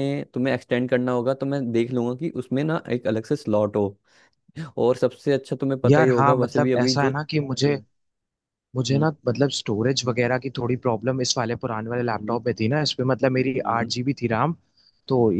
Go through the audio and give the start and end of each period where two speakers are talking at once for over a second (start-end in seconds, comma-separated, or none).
5.9-7.7